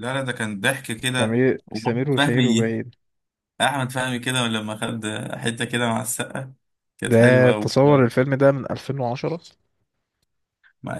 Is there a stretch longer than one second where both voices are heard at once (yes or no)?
yes